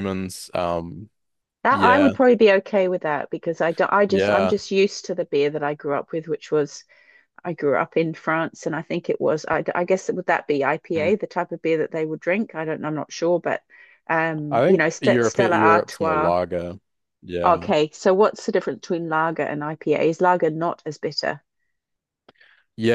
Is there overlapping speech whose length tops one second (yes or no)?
yes